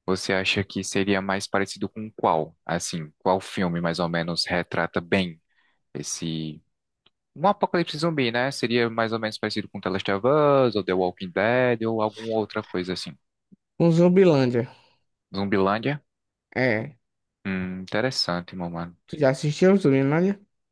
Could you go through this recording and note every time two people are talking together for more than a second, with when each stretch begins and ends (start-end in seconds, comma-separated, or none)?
none